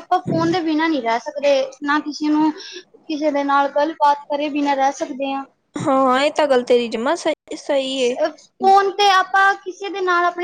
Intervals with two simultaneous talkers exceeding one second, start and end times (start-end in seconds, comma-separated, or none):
none